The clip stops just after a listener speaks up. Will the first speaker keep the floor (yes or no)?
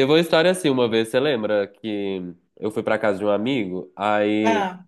yes